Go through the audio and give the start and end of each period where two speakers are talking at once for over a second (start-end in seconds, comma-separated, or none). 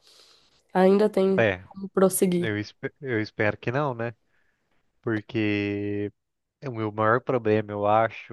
none